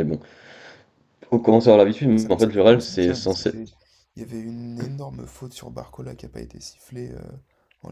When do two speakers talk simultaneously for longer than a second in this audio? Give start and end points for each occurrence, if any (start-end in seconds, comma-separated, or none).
2.1-3.5